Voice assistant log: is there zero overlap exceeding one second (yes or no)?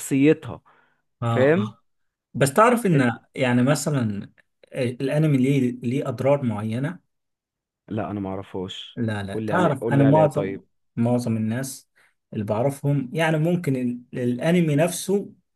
no